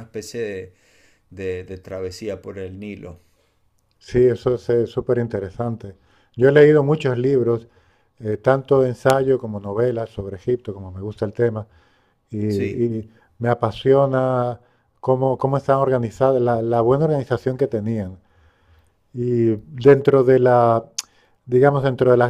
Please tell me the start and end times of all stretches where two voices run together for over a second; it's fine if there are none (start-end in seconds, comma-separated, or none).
none